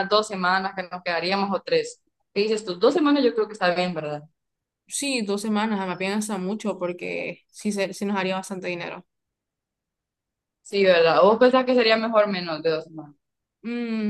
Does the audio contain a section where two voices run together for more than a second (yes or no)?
no